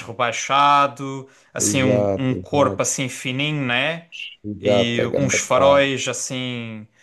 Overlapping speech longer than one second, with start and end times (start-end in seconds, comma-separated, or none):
1.6-2.9, 4.6-5.9